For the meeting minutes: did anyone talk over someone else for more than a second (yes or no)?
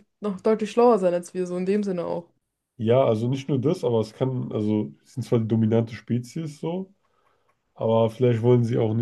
no